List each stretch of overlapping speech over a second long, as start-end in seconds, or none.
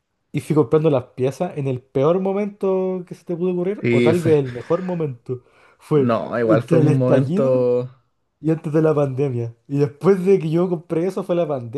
6.0-7.7